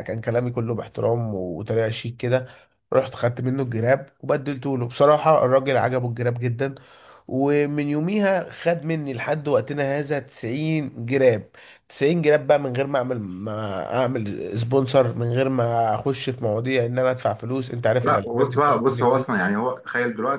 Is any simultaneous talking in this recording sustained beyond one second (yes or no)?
yes